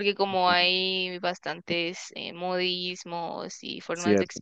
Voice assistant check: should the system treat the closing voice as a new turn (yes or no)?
no